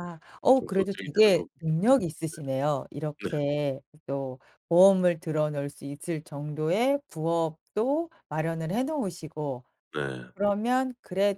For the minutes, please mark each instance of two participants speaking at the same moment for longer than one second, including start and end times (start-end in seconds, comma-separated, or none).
0.5-1.9